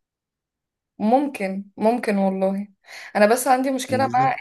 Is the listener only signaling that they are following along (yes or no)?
yes